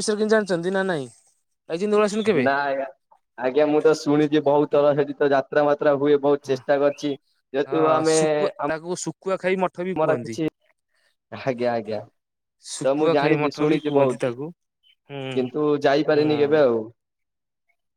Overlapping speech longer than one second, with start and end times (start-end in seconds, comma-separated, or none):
12.8-14.4